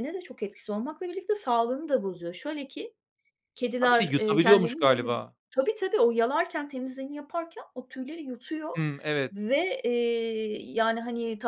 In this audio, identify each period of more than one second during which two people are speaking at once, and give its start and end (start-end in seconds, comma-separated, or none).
3.8-5.1